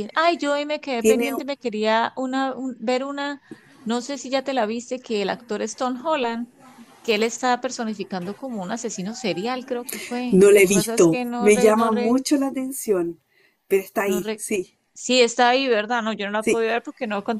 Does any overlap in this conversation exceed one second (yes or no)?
yes